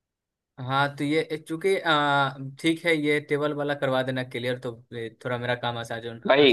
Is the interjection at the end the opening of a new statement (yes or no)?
yes